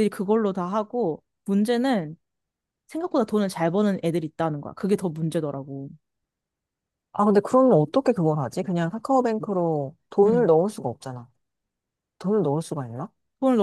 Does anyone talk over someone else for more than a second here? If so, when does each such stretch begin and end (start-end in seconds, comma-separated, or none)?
none